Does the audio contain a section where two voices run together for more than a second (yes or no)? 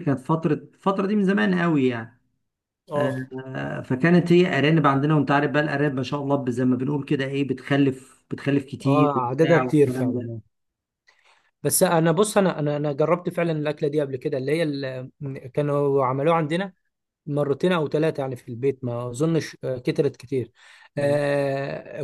yes